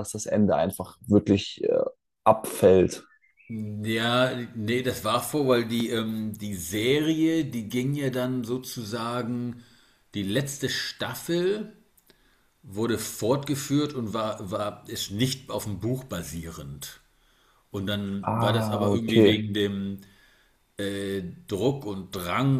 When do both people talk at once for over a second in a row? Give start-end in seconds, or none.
18.2-19.4